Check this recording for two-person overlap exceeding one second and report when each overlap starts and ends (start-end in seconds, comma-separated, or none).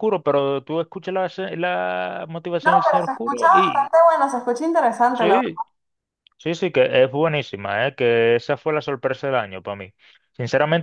2.6-4.0